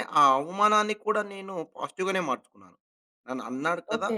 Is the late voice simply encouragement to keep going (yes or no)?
yes